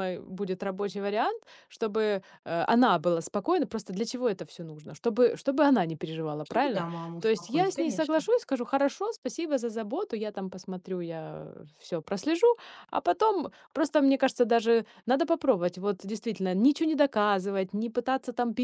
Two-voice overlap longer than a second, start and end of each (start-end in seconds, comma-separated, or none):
6.4-8.2